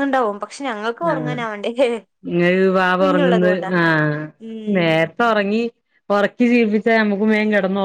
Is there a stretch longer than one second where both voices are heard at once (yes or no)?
no